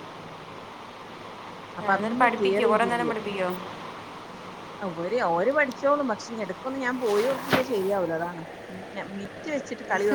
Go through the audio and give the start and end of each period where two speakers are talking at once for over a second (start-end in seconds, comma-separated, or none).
1.8-3.1